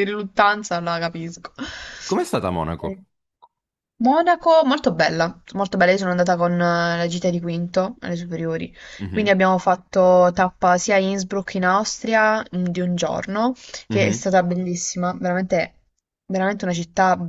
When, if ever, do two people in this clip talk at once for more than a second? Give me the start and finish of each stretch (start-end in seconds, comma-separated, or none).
none